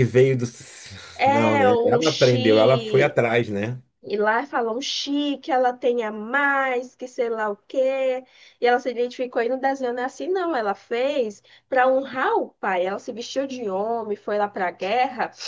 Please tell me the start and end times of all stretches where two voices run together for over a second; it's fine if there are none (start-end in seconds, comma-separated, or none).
1.3-3.2